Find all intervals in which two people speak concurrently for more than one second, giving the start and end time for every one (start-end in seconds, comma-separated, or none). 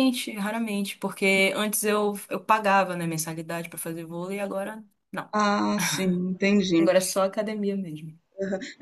none